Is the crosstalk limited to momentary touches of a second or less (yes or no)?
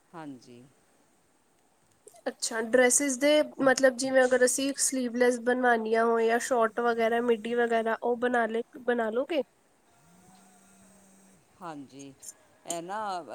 yes